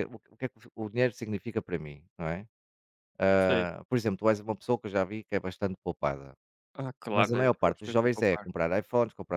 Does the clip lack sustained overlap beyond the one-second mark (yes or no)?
no